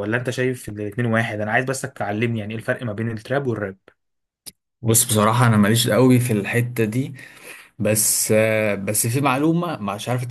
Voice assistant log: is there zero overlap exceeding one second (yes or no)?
yes